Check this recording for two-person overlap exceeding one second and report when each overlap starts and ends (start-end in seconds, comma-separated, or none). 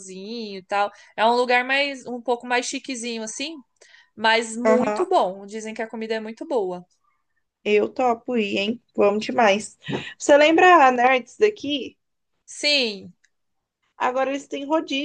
none